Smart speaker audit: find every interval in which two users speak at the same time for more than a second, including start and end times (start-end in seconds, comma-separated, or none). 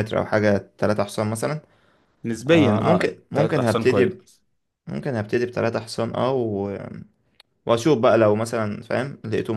2.5-4.2